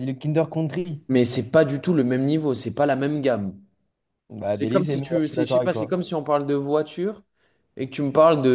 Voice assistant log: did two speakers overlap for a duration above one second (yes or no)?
yes